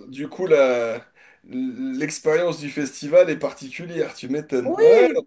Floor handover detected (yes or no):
yes